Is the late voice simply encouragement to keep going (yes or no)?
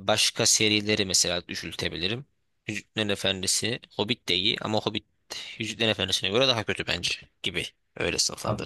no